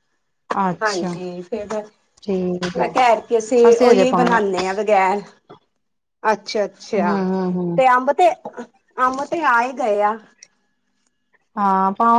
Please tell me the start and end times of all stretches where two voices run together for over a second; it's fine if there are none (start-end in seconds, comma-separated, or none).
none